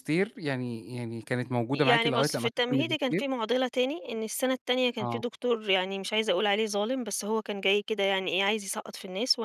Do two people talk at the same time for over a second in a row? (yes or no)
yes